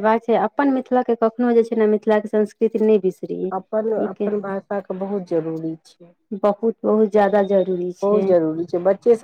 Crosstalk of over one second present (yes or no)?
no